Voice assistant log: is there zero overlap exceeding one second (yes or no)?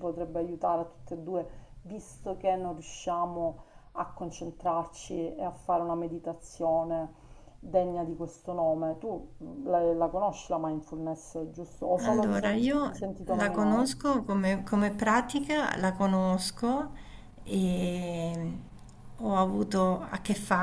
no